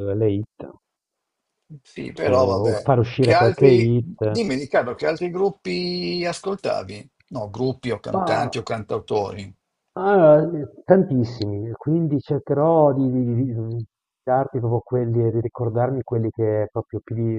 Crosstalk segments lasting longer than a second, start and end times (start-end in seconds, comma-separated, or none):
2.2-4.2